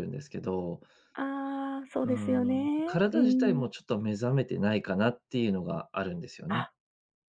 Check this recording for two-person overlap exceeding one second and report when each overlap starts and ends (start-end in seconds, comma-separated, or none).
2.0-3.6